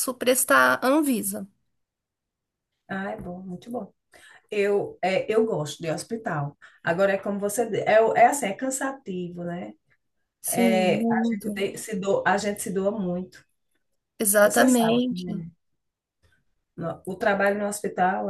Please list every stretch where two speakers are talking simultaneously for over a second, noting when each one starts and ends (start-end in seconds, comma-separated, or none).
10.5-11.7